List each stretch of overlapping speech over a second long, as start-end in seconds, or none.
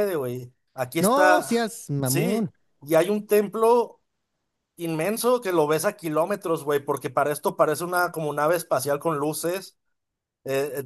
1.0-2.5